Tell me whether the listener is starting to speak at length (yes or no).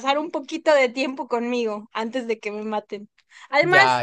no